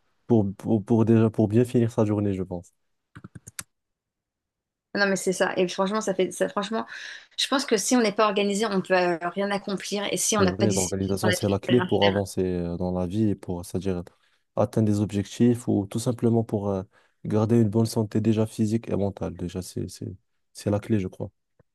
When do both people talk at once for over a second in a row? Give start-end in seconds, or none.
10.3-12.2